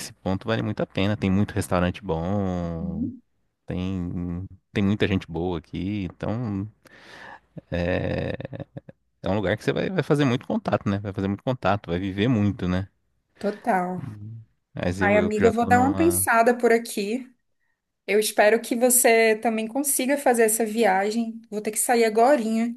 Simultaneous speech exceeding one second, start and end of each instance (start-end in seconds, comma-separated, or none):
15.0-16.3